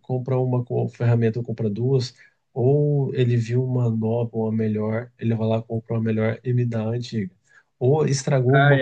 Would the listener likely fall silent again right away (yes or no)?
yes